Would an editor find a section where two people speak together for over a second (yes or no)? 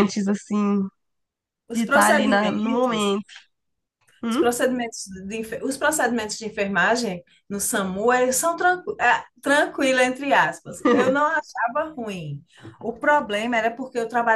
yes